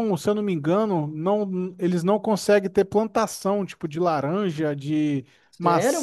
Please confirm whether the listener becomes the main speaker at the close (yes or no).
yes